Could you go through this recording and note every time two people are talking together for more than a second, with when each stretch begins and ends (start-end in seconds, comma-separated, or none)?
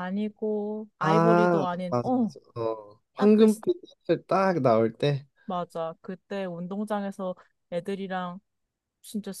1.0-2.3